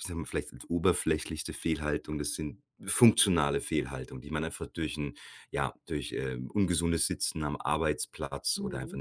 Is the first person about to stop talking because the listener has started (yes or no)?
no